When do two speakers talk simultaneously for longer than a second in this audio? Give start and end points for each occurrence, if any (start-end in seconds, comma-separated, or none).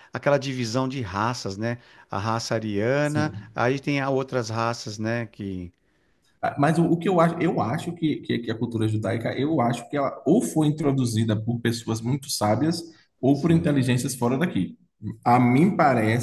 none